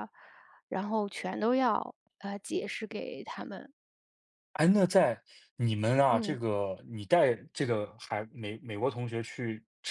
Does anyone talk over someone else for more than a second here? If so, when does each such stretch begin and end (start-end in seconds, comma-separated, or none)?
none